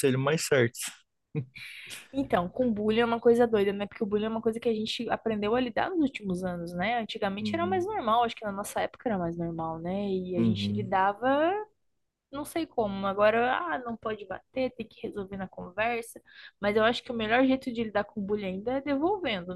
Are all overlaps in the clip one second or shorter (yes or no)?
yes